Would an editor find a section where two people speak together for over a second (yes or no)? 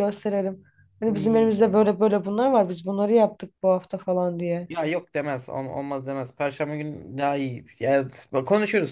no